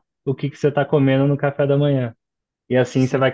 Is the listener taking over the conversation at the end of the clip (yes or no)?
no